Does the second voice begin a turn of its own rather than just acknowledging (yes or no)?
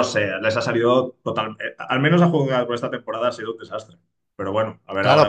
yes